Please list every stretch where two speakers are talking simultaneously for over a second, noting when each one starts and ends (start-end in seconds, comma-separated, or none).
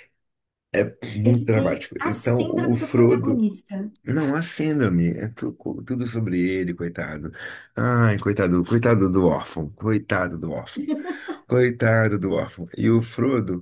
1.2-3.4